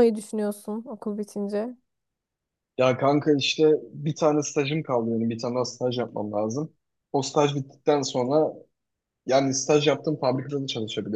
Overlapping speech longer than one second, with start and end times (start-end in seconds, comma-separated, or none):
none